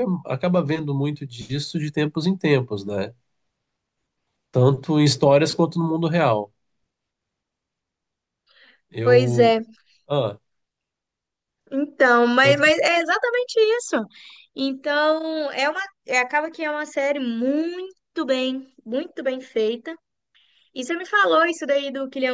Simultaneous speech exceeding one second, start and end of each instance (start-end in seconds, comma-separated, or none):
none